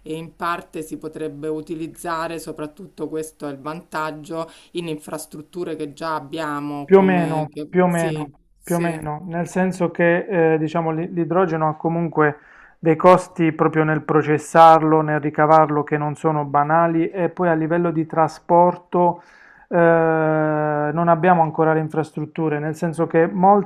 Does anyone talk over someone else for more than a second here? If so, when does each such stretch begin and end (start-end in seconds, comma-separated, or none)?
6.8-9.0